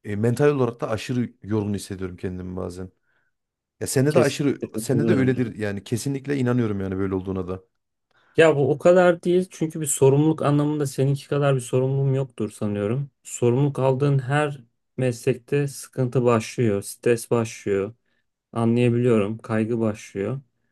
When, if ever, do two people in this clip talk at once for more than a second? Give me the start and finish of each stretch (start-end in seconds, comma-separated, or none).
4.1-5.4